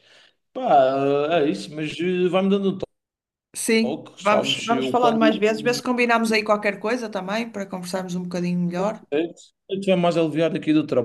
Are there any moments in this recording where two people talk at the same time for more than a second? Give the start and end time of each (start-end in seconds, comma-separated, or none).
3.8-5.8